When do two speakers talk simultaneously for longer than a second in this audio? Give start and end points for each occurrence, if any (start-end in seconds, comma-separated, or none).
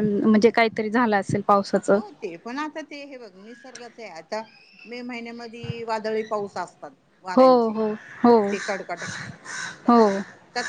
none